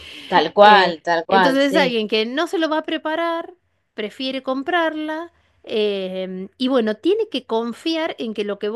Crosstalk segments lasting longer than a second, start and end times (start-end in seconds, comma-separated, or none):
0.6-2.0